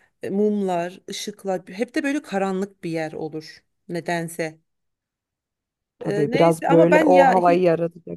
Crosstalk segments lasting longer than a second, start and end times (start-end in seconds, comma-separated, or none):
6.0-7.6